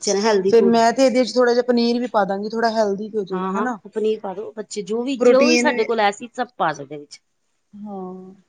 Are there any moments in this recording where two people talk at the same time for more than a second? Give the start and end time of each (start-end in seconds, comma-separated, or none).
none